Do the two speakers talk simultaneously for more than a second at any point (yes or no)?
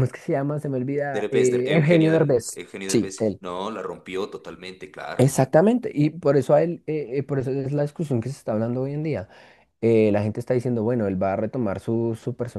yes